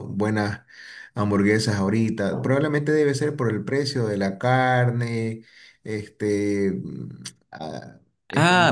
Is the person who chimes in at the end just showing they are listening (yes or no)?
no